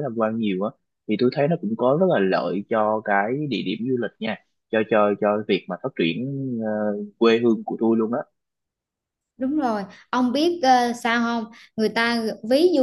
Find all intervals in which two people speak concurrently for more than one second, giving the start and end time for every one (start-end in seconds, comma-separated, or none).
none